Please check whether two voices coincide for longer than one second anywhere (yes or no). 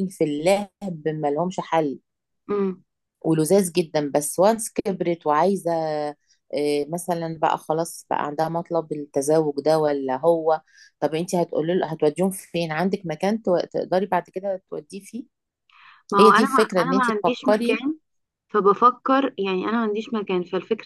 yes